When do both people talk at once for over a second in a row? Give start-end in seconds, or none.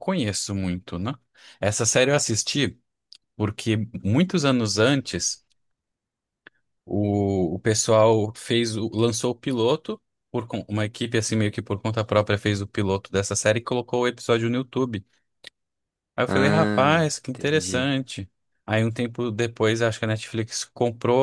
16.3-17.9